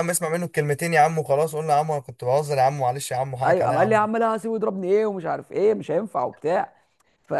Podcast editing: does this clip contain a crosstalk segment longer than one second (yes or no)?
no